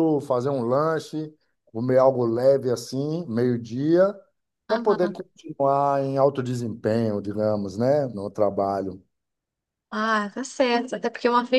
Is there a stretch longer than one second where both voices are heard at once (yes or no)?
no